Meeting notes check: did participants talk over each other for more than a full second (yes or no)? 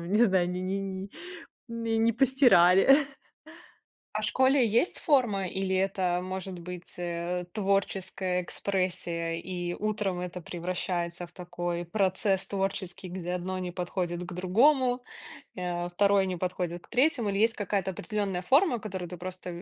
no